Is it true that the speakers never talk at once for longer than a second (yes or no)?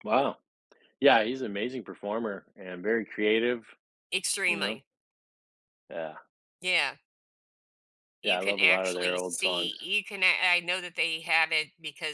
no